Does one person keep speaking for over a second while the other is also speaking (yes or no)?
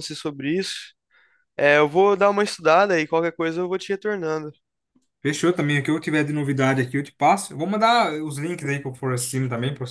no